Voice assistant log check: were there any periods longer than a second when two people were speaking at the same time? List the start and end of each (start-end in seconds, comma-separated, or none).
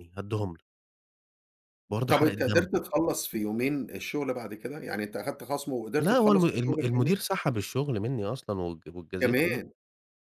6.0-7.2